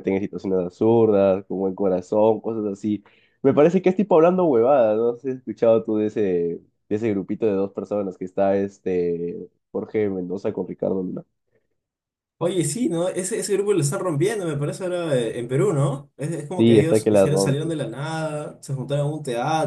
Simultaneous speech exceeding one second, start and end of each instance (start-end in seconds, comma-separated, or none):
16.6-17.8